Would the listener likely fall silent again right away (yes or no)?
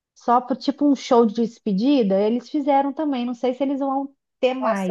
no